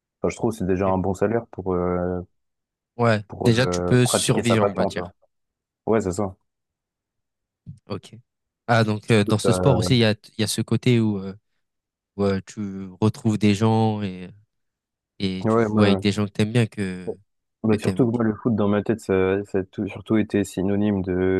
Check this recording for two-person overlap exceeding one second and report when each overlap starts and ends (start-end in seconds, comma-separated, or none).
3.3-5.1